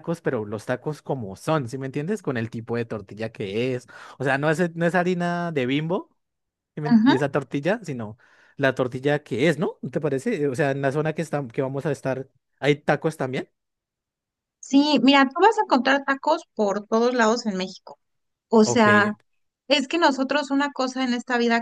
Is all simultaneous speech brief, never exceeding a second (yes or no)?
yes